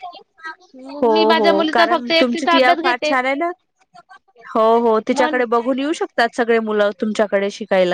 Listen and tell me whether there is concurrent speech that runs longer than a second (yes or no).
yes